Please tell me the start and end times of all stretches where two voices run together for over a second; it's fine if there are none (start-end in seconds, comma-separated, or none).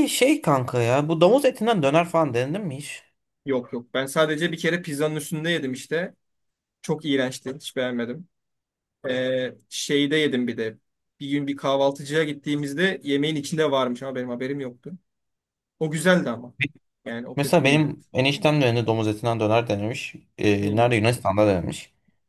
none